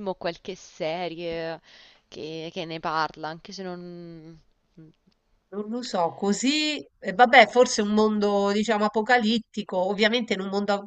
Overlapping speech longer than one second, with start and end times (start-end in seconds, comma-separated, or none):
none